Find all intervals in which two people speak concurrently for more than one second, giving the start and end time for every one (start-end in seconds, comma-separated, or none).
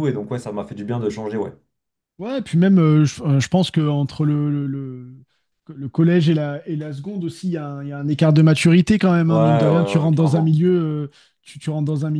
9.3-10.6